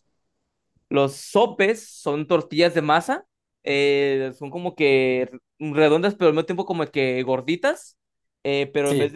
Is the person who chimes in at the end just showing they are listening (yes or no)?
yes